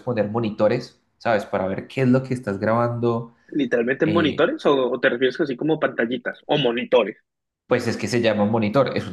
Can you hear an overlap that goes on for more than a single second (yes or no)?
no